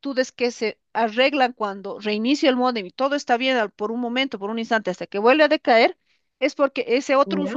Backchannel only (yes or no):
yes